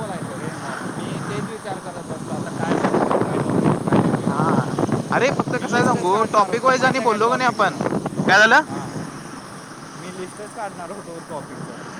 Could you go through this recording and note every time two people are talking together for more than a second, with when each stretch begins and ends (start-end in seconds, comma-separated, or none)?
5.6-7.8